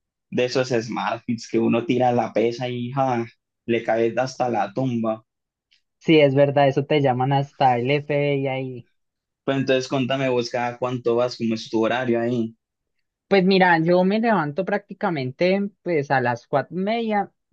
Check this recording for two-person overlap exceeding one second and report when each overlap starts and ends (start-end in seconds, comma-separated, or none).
none